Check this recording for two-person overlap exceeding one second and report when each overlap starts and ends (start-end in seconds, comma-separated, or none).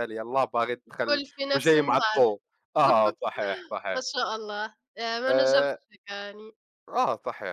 0.9-2.2